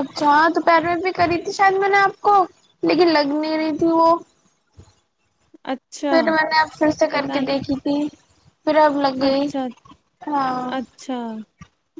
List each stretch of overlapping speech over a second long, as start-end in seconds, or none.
none